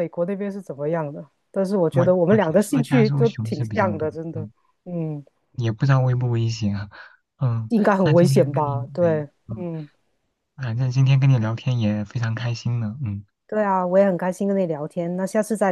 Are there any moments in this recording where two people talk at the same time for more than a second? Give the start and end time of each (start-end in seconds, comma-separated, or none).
1.9-4.5, 7.7-9.7